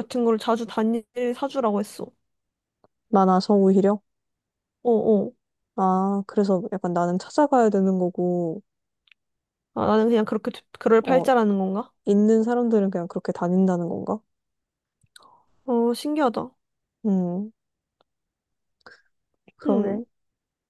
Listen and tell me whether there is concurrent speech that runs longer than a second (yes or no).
no